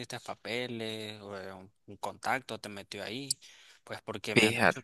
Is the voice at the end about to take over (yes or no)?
no